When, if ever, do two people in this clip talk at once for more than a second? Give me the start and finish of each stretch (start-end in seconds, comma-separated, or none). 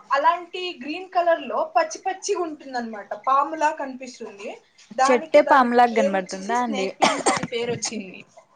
5.0-6.9